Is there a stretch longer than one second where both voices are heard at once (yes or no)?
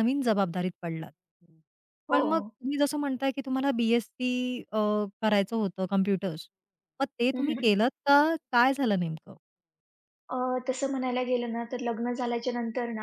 no